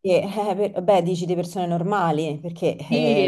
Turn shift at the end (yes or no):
yes